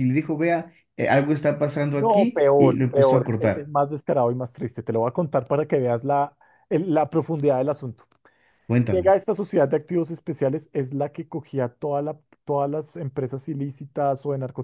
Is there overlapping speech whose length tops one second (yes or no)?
yes